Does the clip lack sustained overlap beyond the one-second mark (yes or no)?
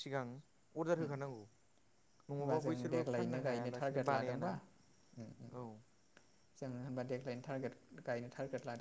no